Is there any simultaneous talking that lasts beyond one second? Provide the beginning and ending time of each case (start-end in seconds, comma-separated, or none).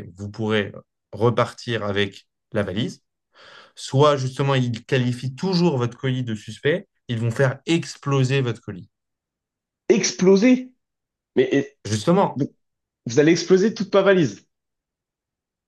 none